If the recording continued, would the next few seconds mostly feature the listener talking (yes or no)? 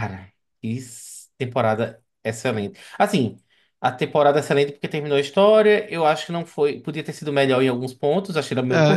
yes